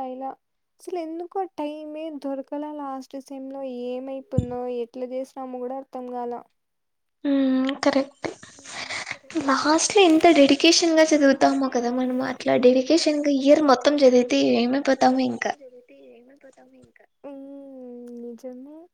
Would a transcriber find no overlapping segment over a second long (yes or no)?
yes